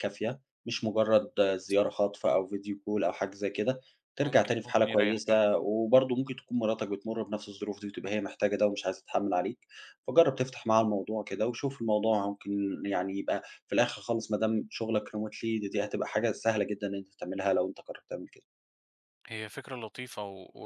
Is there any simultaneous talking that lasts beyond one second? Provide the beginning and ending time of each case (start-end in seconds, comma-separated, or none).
4.2-5.4